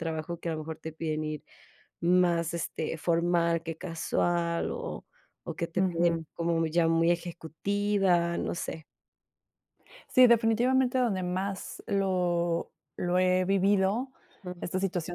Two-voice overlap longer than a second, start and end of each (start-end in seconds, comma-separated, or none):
none